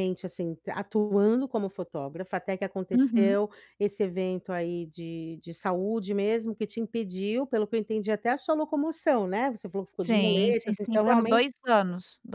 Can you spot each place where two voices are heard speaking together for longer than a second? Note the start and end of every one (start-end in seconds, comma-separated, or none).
10.0-11.4